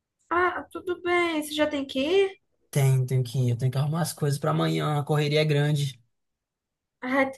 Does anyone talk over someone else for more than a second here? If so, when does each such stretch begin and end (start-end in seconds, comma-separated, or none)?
none